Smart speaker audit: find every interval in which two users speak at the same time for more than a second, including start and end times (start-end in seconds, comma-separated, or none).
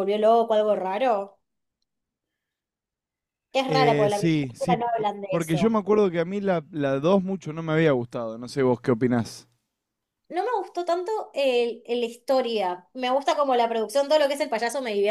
3.6-5.8